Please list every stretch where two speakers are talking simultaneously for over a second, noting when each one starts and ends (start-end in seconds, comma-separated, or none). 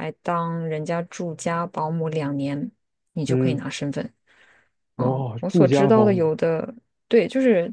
5.0-6.3